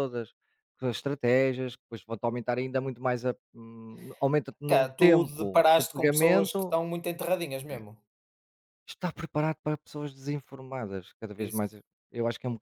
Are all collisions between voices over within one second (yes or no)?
no